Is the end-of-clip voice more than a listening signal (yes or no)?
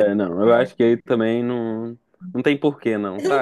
yes